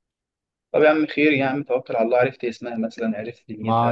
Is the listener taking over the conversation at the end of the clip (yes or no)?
yes